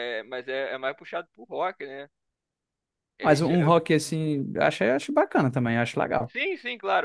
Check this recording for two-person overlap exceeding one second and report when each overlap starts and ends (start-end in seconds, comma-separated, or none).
none